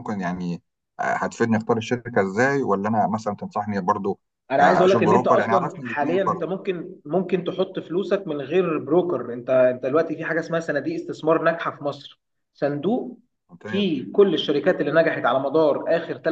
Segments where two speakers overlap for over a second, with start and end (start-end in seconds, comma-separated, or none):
4.6-6.5